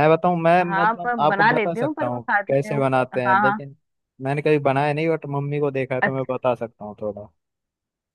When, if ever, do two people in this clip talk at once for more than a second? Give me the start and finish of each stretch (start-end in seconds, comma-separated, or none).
0.6-3.6